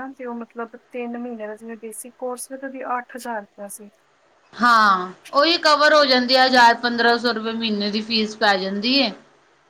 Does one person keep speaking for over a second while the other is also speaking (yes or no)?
no